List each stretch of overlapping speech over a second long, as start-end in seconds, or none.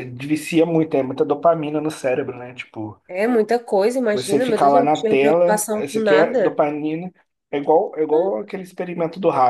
4.1-6.6